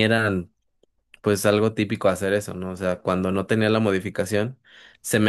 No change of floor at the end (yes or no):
yes